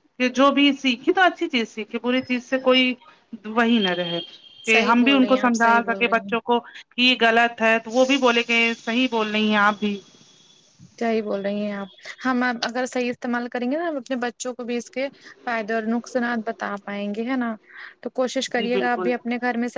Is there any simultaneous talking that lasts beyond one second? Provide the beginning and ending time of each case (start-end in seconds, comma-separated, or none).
4.7-6.3